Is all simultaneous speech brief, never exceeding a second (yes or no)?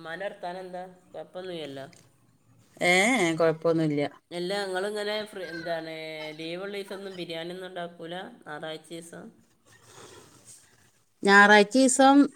yes